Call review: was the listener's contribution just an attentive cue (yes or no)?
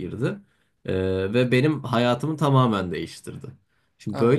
yes